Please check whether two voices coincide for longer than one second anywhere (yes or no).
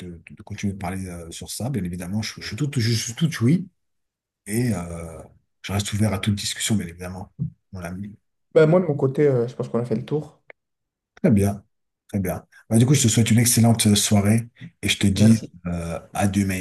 no